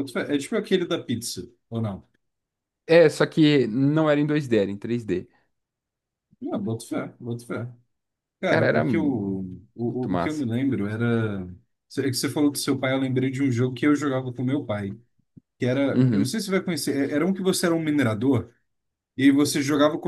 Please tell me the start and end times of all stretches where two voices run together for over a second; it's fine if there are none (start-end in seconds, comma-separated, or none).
8.4-10.4